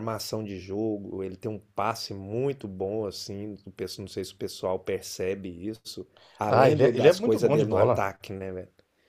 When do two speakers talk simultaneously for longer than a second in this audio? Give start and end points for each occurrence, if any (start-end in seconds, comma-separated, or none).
6.5-8.1